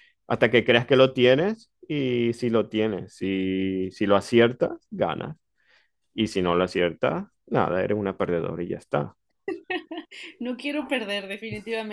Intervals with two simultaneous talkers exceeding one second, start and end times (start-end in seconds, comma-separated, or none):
none